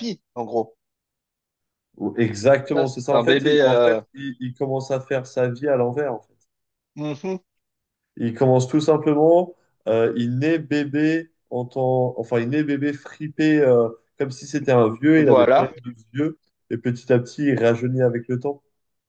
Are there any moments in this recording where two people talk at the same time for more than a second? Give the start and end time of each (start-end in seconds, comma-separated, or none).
2.7-4.0